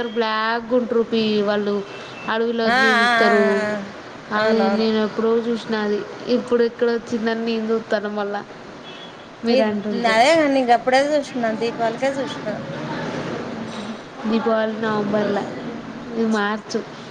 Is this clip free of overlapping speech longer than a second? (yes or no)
yes